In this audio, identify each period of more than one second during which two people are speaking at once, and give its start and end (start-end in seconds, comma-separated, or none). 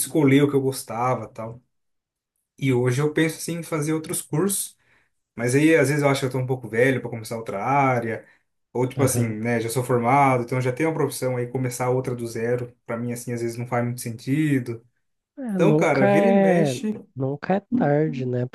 15.5-16.7